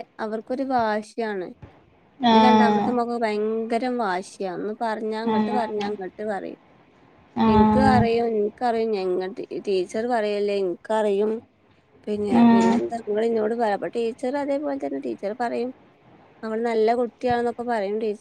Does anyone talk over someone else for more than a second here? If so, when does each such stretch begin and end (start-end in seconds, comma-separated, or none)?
none